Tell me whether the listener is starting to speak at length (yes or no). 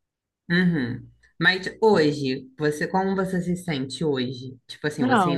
yes